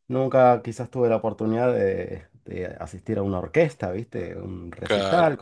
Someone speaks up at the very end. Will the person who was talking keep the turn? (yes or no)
yes